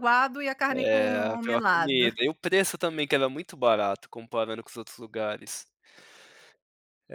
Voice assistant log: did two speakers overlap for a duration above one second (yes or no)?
yes